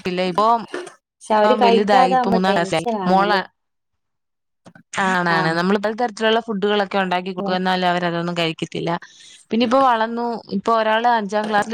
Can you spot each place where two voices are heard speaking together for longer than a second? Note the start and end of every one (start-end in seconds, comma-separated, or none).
1.6-3.4